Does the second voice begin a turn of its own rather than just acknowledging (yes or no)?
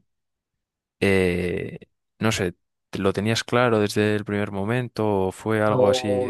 yes